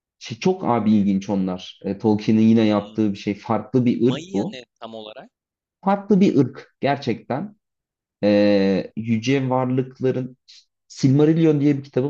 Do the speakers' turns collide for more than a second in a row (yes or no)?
no